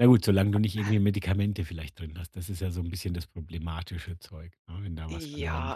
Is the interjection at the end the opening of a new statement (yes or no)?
yes